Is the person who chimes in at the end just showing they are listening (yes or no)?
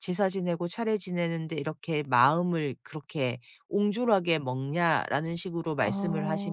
yes